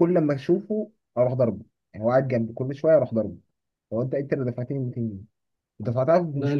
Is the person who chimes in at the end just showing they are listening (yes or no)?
yes